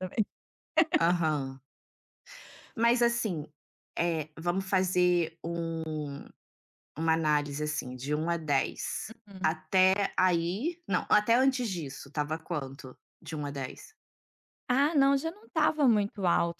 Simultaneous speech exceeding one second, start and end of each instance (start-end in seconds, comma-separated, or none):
none